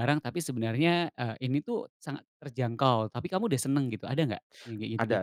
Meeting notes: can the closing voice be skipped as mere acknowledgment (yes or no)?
no